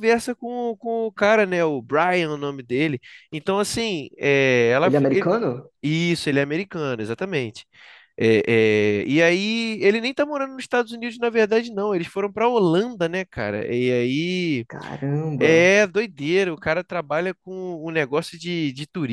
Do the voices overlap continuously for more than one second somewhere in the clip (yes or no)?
no